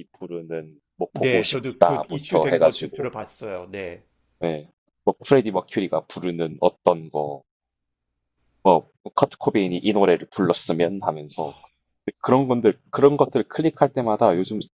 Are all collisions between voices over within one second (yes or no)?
no